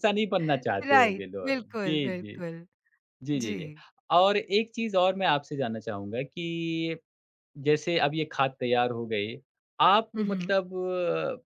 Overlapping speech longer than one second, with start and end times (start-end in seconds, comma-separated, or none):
0.9-2.4